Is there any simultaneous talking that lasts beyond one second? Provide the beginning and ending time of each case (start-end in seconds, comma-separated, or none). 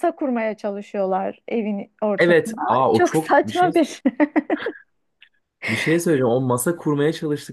2.2-3.7